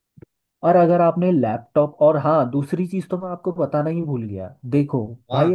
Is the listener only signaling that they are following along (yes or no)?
yes